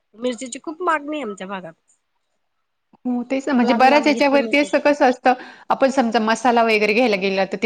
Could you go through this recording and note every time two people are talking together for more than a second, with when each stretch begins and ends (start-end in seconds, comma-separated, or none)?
3.5-4.7